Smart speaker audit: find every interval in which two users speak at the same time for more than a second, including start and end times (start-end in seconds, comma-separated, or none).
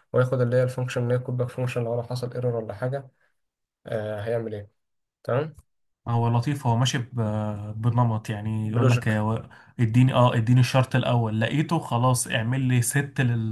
none